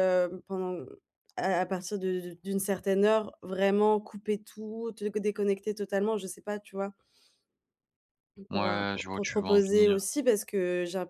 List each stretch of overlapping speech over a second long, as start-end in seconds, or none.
8.5-10.0